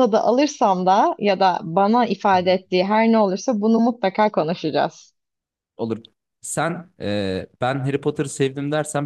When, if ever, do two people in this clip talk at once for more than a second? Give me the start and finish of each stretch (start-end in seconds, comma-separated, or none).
none